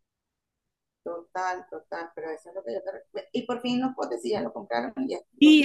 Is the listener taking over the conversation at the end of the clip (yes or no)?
yes